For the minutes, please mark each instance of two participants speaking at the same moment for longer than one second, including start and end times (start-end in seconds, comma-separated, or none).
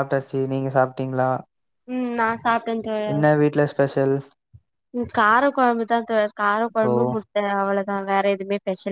none